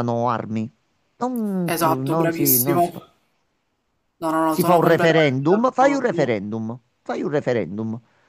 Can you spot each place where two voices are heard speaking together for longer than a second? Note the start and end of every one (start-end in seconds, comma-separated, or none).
1.6-2.9, 4.5-6.1